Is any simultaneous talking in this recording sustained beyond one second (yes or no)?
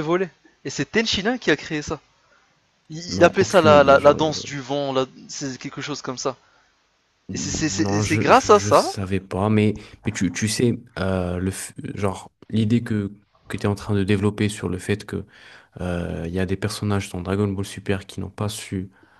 yes